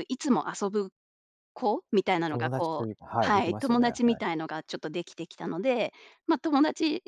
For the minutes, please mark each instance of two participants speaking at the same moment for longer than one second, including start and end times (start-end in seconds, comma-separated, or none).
2.3-4.2